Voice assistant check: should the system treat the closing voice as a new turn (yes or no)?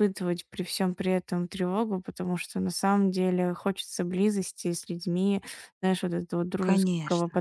no